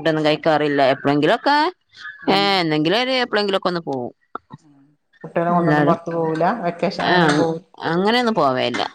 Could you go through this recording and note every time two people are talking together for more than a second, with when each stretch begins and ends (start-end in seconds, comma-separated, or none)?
5.6-7.0